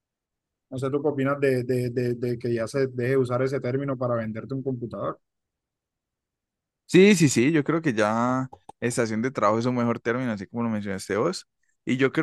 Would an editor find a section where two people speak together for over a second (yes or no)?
no